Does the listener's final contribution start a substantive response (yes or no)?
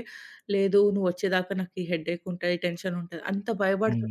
yes